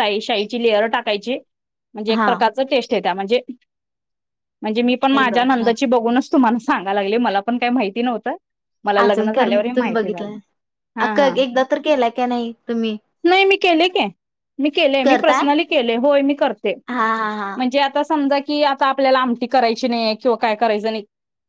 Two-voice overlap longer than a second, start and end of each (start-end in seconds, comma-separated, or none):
9.0-10.3